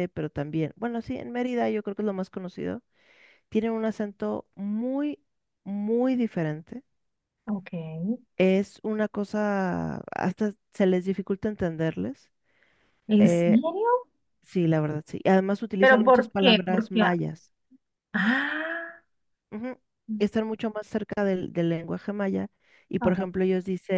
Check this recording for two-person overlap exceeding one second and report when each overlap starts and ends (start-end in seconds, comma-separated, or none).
15.8-17.0